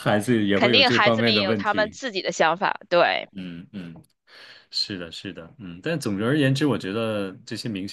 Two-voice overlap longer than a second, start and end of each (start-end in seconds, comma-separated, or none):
0.6-2.0